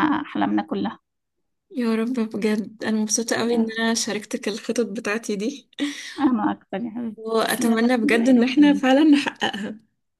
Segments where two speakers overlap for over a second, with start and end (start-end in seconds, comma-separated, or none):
7.2-8.8